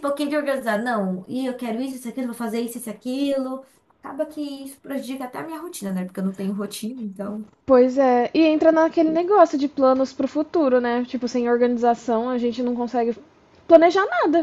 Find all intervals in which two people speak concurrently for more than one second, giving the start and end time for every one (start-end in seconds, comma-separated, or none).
none